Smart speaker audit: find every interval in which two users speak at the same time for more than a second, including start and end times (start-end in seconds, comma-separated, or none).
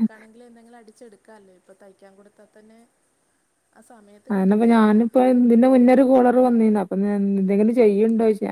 none